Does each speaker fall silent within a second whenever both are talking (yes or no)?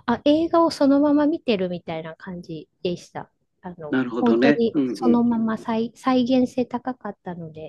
no